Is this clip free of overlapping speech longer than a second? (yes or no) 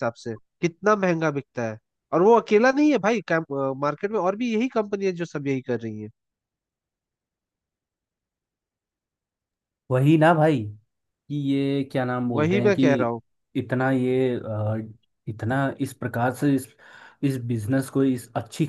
yes